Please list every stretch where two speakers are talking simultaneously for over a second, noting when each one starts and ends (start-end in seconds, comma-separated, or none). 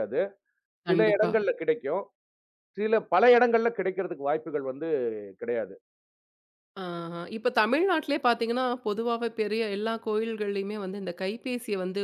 none